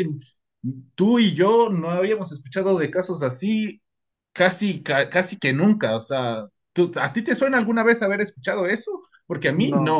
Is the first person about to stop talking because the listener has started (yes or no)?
no